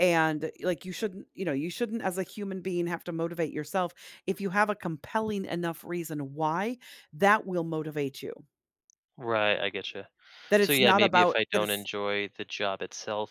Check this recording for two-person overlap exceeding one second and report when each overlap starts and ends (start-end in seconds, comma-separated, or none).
10.6-11.9